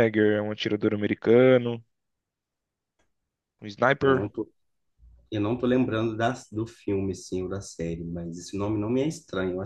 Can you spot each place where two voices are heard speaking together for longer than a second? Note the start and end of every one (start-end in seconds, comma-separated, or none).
none